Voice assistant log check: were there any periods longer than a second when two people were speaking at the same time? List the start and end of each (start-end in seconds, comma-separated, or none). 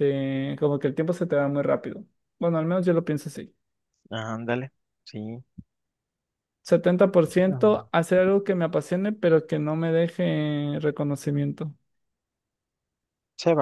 none